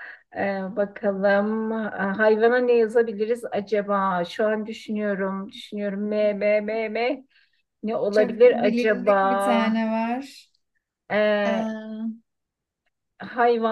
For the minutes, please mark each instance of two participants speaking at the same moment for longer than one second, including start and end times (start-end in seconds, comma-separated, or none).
8.1-9.8